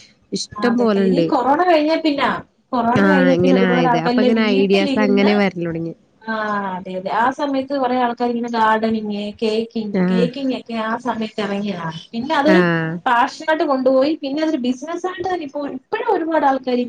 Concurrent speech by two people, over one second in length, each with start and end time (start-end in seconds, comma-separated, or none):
3.0-5.3